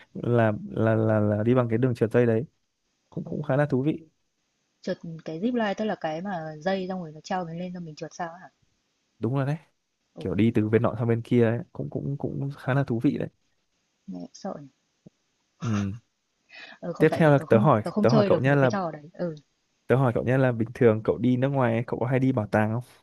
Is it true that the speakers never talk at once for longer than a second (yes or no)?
no